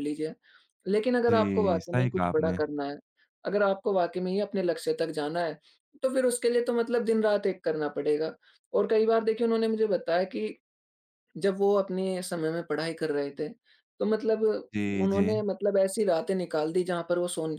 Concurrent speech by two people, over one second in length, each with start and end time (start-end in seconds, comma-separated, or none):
1.3-2.6